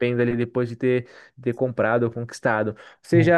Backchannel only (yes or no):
yes